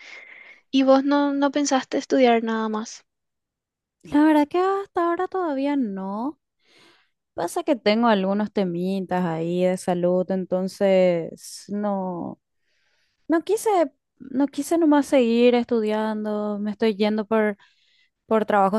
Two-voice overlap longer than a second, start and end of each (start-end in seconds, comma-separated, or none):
none